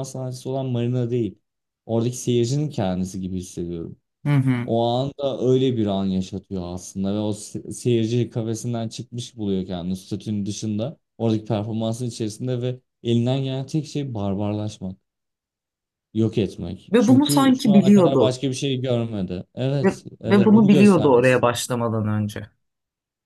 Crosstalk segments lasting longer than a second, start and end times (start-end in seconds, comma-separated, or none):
16.9-18.4, 19.8-21.5